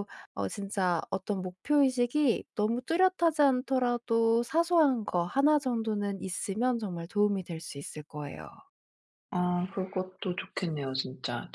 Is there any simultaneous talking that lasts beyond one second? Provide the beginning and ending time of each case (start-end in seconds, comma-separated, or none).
none